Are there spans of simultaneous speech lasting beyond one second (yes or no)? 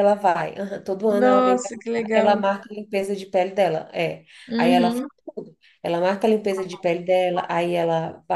yes